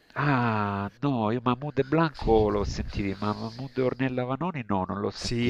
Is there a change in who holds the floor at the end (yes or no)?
yes